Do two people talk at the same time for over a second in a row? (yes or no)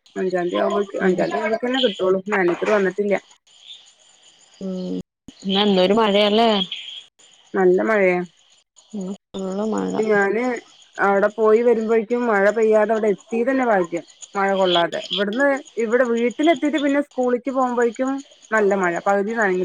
no